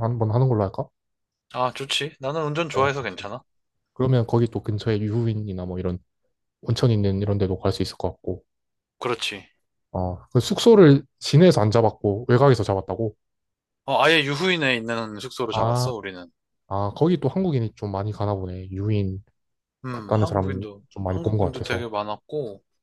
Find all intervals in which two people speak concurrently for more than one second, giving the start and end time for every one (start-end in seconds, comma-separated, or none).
19.9-21.9